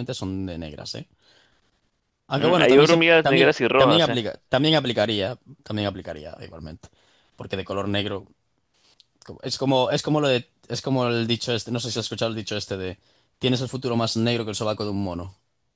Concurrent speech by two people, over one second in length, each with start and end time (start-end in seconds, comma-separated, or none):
2.3-4.2